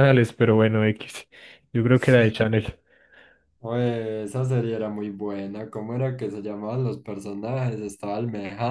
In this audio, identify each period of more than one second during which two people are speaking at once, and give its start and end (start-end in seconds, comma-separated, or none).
none